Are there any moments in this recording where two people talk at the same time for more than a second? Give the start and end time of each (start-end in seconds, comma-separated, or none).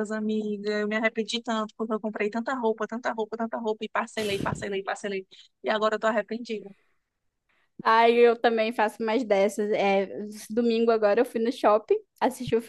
none